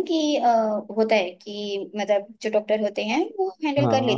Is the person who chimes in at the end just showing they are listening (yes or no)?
yes